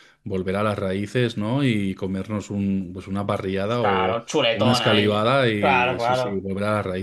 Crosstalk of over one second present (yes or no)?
yes